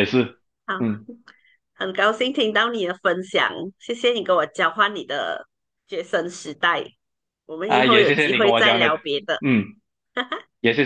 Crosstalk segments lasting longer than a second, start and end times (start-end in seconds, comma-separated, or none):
7.7-8.9